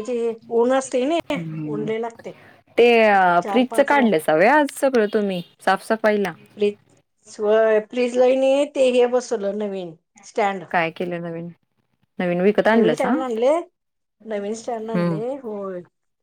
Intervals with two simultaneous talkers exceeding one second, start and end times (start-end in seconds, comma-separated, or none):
none